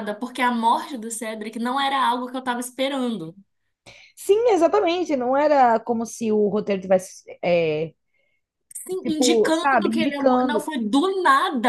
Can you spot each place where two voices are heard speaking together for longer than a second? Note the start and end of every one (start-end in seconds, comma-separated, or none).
9.0-10.7